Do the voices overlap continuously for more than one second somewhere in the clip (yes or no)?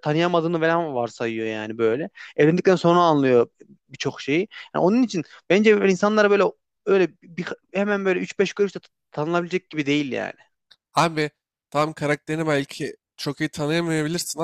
no